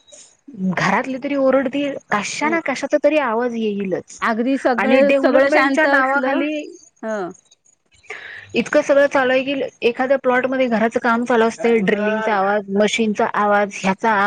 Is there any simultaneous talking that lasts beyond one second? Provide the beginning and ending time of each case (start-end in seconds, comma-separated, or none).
5.1-6.4